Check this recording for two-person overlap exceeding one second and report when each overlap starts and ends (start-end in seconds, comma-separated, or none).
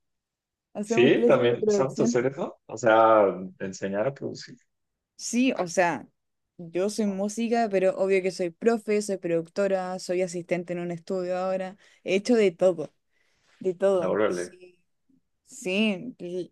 0.8-2.2